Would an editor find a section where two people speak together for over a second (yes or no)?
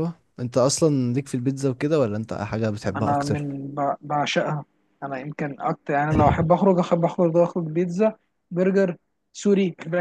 no